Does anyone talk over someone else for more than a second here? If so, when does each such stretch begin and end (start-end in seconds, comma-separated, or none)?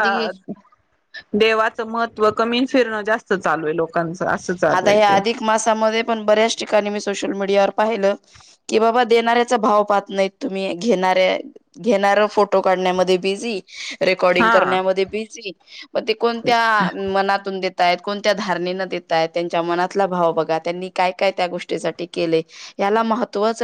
none